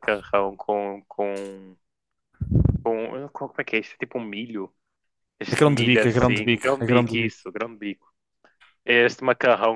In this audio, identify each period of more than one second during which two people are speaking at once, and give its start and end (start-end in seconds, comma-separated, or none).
5.5-7.4